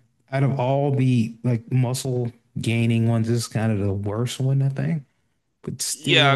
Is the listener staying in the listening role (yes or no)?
no